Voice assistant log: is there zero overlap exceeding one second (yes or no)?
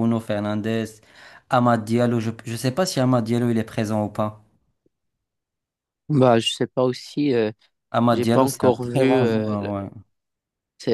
no